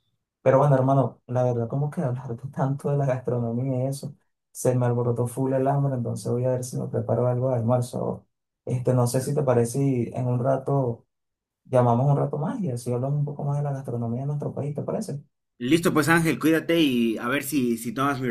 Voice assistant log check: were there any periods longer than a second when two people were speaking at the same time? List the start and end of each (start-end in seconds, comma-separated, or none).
none